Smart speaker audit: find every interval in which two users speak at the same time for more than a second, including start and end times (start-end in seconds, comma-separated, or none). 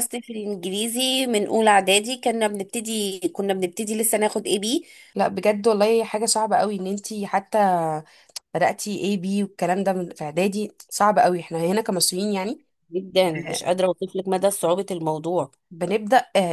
none